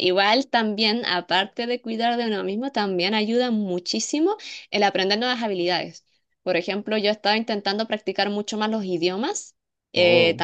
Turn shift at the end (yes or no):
no